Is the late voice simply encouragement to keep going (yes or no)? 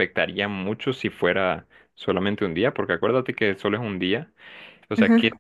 yes